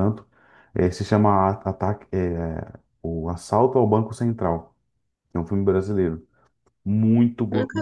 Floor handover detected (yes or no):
no